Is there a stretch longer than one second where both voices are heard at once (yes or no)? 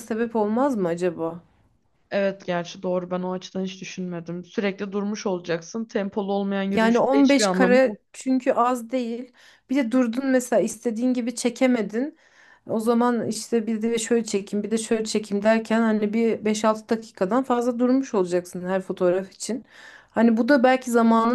yes